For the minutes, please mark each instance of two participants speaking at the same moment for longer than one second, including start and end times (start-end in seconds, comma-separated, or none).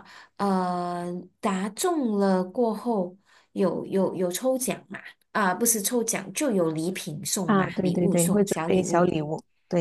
7.4-9.1